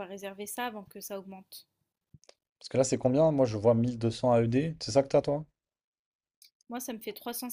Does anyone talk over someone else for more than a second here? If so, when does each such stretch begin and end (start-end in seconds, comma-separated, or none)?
none